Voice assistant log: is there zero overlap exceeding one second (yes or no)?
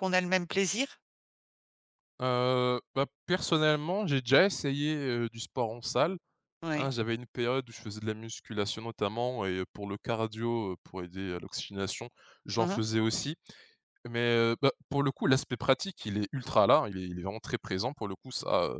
yes